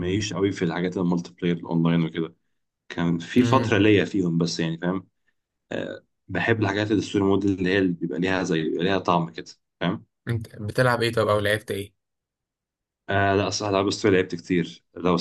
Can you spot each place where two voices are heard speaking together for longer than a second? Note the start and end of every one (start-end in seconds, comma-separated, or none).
none